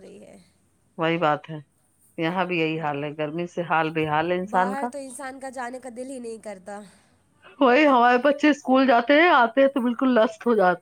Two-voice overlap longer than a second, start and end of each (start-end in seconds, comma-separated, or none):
none